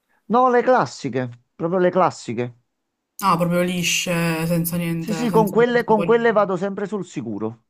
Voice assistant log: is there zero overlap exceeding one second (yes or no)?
no